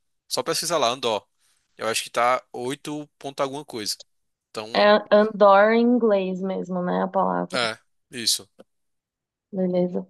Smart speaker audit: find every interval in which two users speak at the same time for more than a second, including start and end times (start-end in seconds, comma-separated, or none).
none